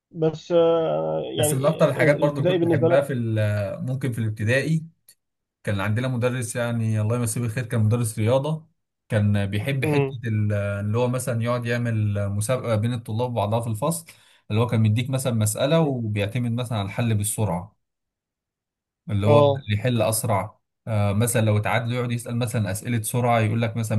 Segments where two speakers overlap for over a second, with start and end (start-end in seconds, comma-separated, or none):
1.4-3.0